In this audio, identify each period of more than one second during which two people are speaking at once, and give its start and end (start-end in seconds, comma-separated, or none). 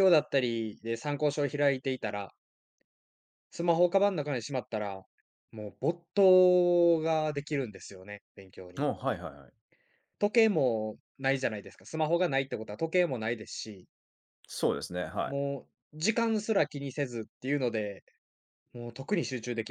none